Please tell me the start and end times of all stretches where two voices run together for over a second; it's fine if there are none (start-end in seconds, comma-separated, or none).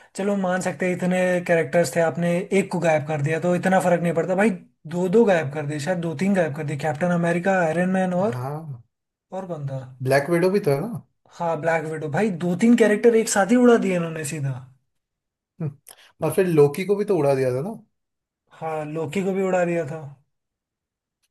none